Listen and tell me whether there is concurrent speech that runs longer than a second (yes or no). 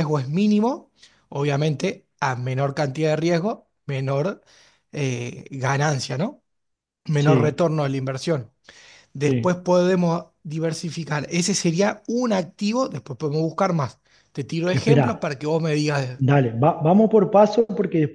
no